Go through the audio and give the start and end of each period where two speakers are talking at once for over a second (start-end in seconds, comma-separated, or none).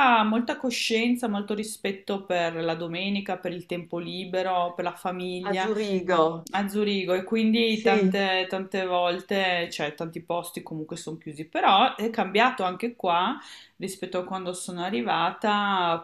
none